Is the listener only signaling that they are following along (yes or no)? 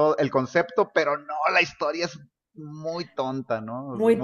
no